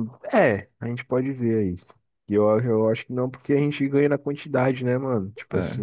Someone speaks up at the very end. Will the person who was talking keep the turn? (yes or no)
yes